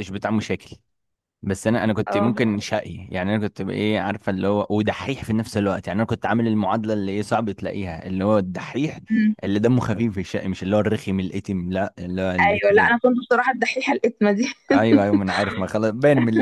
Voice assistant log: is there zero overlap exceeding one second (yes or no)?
yes